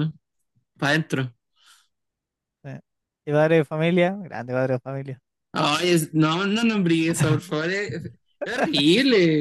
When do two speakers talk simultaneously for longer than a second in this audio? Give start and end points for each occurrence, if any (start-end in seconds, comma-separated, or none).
none